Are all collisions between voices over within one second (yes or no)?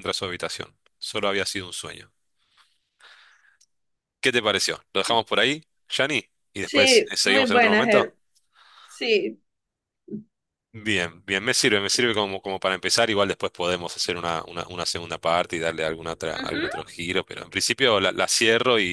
no